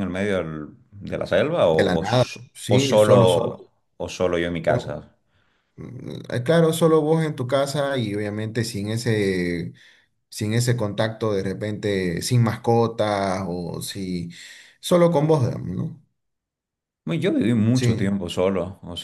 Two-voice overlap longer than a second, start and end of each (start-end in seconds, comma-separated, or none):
1.6-3.6